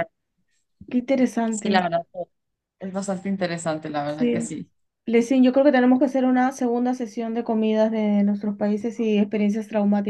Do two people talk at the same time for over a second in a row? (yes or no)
no